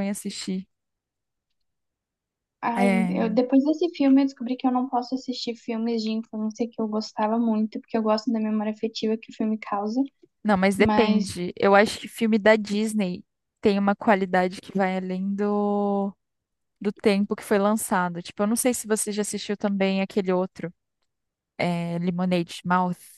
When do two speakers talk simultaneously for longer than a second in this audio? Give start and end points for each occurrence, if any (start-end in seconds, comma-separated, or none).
none